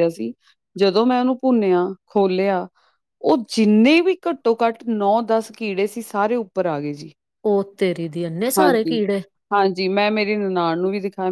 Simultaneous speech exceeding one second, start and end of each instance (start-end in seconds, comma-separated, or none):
none